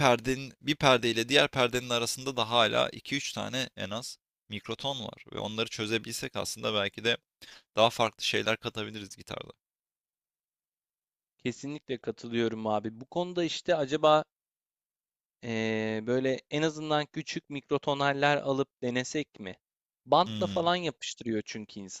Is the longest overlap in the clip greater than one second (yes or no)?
no